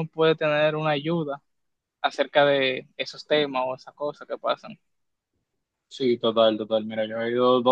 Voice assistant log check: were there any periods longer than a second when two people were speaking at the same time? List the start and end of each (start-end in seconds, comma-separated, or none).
none